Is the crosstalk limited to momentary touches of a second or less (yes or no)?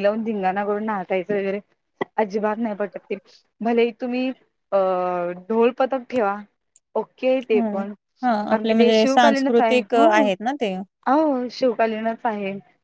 no